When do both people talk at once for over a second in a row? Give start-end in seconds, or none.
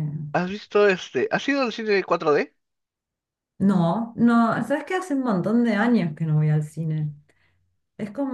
none